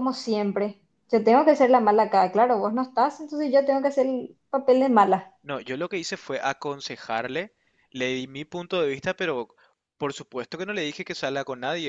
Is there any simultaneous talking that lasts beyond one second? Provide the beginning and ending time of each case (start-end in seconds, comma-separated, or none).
none